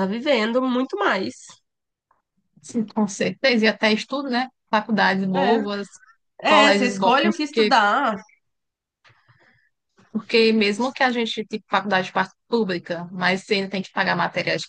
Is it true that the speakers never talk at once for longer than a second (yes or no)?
no